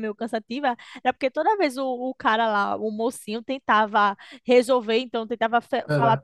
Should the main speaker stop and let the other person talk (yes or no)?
no